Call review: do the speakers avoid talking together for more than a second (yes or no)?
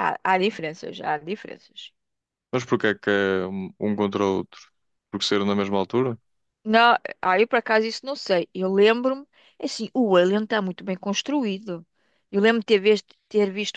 yes